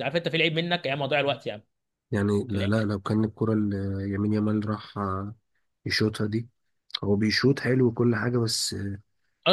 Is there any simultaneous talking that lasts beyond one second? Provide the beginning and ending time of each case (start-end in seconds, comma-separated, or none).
none